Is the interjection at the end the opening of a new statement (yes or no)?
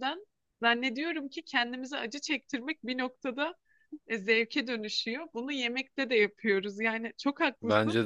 no